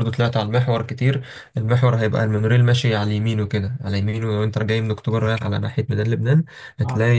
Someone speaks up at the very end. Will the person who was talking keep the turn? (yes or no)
yes